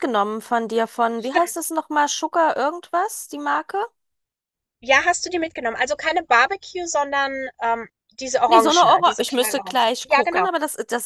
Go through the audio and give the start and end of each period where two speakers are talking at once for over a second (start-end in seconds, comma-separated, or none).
8.5-10.5